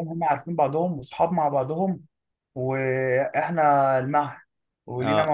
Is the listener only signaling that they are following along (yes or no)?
yes